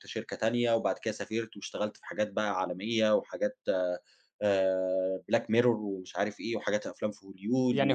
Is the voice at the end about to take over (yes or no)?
yes